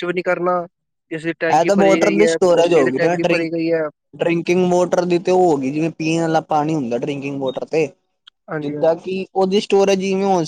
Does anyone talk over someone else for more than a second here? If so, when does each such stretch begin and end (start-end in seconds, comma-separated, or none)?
1.3-3.5